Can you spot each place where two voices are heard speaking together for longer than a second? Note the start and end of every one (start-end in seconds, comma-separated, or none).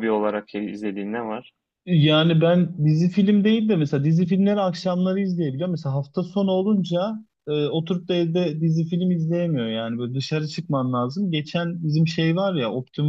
none